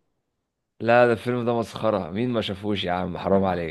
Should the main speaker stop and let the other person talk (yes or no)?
yes